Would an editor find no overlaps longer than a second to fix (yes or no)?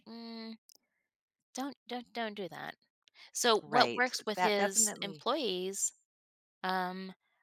no